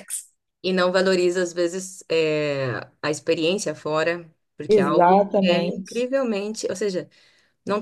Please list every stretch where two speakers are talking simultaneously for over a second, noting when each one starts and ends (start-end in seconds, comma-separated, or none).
4.7-6.1